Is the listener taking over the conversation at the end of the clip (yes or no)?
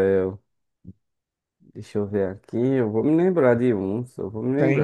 yes